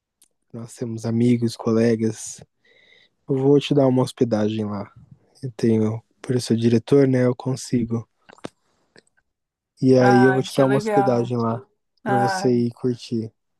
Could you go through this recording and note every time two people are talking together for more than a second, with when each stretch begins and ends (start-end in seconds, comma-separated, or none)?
10.0-11.3